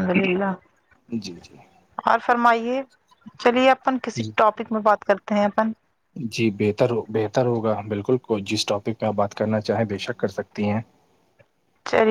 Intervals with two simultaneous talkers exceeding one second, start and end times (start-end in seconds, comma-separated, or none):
none